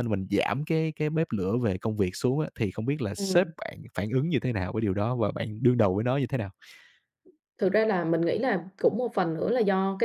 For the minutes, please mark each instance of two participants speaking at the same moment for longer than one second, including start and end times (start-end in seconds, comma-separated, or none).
none